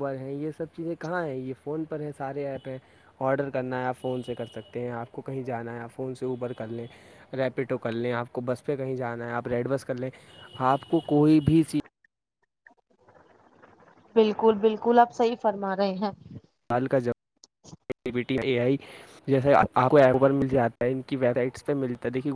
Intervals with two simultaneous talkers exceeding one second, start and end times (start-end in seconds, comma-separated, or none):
none